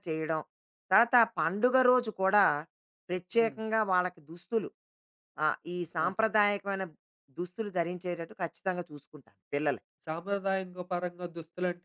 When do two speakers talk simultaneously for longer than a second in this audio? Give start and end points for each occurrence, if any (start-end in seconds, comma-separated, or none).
none